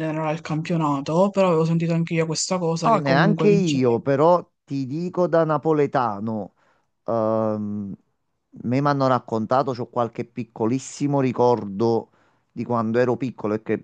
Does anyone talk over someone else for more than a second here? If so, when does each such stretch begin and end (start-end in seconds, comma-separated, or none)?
2.8-4.1